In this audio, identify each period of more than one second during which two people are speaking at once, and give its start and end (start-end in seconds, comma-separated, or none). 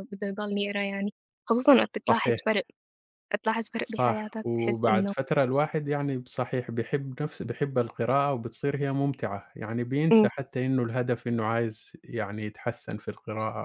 3.8-5.1